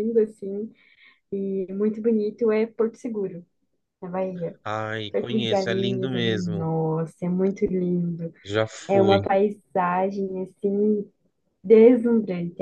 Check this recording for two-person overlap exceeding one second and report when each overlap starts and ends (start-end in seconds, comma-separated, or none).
5.1-6.7